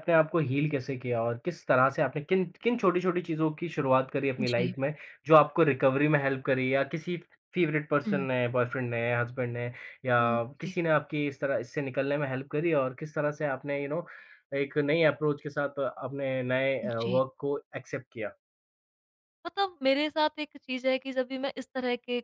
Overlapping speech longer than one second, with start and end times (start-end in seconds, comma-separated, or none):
none